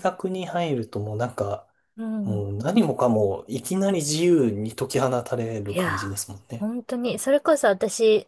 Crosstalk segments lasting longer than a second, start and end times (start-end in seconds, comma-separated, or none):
none